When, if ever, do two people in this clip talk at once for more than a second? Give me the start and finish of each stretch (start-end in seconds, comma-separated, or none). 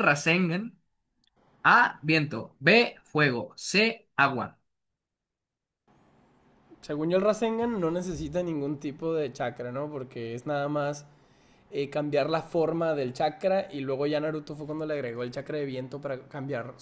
none